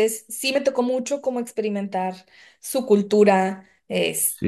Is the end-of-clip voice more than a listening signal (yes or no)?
no